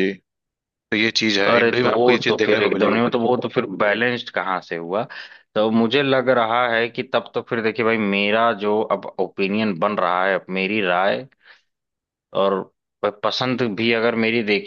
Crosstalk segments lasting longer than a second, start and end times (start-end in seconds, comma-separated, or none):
1.5-3.0